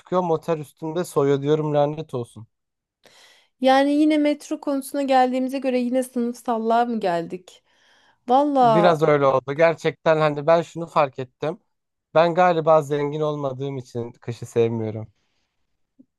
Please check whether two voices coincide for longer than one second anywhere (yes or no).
no